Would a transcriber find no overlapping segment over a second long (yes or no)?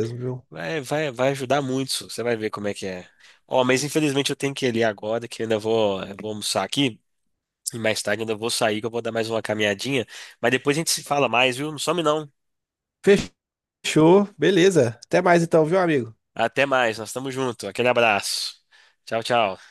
yes